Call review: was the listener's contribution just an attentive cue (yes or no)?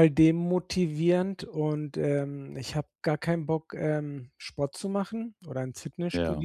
yes